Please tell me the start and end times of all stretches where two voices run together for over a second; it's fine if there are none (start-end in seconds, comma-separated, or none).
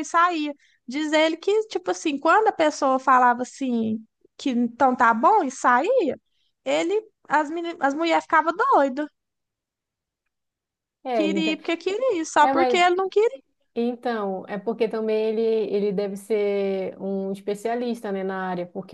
none